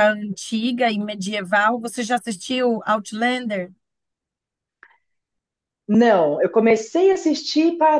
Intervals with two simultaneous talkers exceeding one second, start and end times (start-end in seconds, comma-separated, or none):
none